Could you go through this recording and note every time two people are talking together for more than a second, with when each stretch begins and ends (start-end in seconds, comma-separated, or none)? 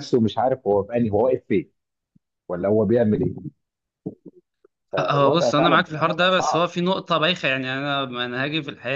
5.0-6.7